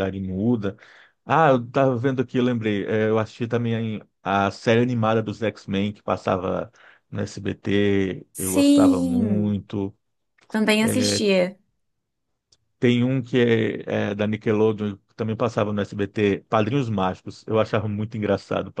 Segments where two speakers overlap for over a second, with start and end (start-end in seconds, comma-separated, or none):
8.3-9.6